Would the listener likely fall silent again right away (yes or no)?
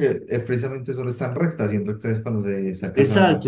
no